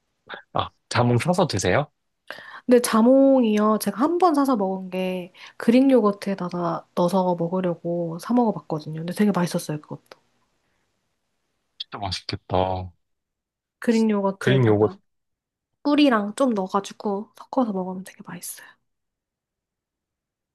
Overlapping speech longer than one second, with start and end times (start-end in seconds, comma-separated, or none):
none